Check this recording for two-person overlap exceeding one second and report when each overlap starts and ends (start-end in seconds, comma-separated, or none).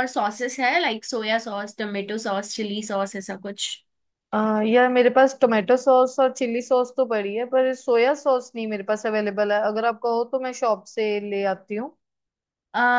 none